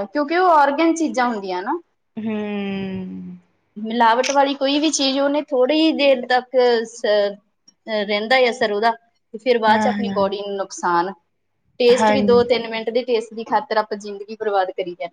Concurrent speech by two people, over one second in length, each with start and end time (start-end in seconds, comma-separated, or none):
none